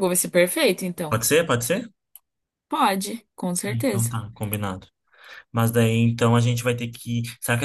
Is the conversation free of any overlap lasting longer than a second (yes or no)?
yes